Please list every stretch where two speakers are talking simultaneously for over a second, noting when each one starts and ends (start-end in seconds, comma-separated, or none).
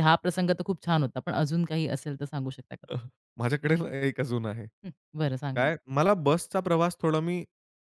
none